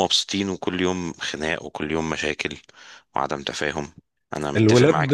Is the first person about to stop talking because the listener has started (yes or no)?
yes